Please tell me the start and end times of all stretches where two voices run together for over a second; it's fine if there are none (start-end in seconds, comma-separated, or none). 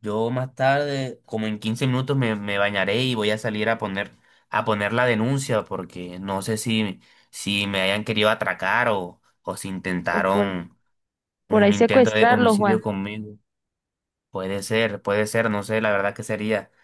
11.5-12.8